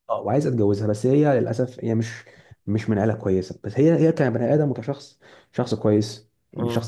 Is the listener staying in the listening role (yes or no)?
yes